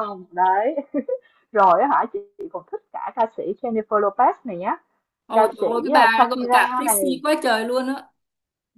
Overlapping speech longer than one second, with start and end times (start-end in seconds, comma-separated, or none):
5.3-7.2